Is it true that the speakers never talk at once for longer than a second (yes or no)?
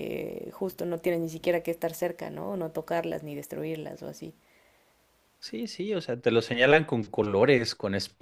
yes